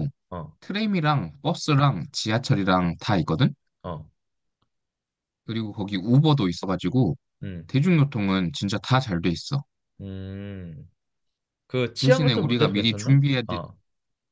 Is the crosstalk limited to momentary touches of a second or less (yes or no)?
no